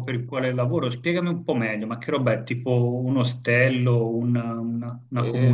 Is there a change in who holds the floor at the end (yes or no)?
yes